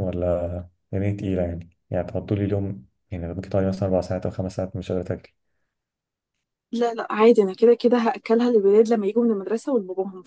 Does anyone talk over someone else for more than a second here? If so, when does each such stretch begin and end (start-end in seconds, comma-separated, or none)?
none